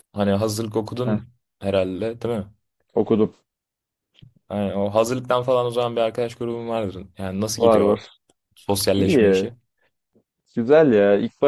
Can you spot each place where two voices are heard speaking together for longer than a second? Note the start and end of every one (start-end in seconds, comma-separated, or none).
none